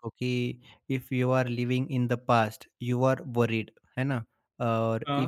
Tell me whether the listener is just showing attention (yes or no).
yes